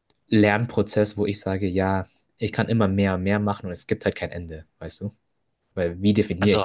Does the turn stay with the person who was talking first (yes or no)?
no